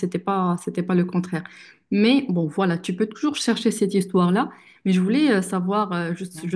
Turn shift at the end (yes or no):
no